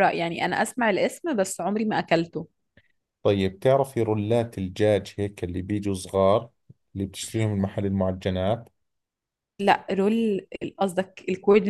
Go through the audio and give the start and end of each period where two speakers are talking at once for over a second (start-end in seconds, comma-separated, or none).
none